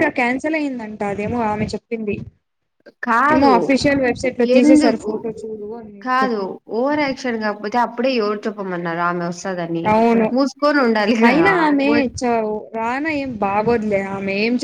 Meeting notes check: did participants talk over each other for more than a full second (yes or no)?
no